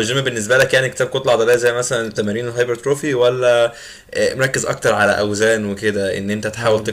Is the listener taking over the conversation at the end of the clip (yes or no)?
no